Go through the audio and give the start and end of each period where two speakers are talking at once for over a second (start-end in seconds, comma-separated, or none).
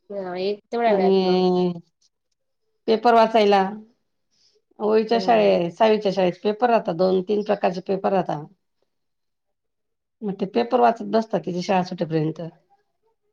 none